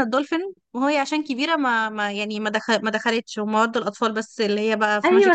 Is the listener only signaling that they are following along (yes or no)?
no